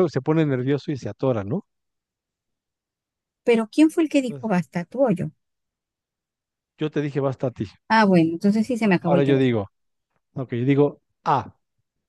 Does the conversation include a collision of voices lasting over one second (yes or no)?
no